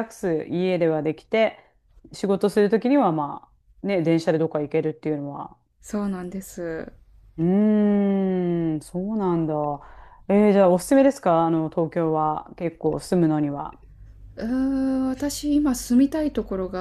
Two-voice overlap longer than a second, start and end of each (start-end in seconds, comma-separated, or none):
none